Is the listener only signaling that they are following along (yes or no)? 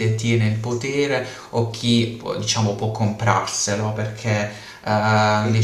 yes